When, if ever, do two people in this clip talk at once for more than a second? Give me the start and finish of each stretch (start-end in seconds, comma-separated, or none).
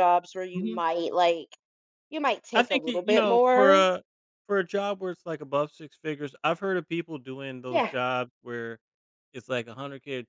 2.5-3.8